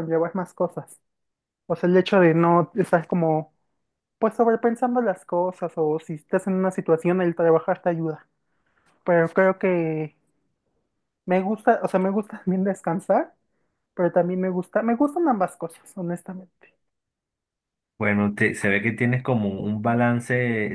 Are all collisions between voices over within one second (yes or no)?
yes